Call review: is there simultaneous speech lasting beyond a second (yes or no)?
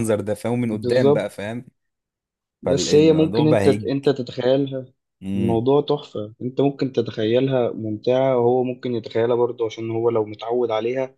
yes